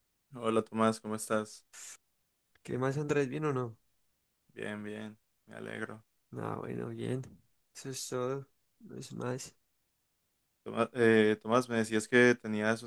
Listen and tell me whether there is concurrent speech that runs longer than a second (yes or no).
no